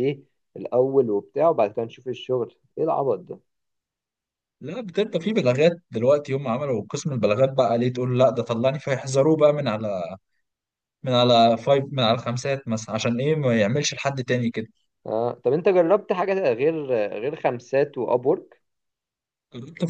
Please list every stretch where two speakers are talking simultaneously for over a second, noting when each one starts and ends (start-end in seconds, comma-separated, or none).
none